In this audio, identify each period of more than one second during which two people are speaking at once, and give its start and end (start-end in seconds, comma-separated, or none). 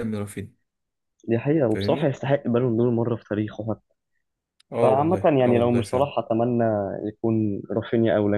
4.8-6.1